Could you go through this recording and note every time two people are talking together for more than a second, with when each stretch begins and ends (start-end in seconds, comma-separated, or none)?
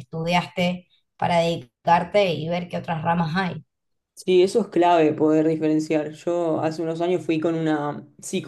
none